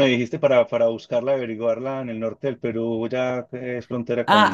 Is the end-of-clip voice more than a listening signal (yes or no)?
yes